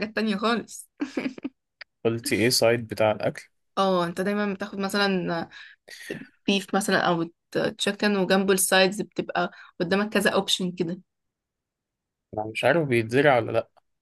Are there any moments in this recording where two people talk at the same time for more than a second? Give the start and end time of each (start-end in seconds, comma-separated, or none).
none